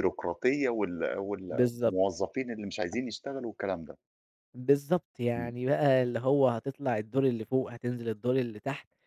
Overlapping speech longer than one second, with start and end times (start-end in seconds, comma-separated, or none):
none